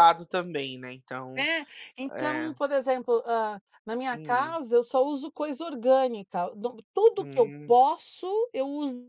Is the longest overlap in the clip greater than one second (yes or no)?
no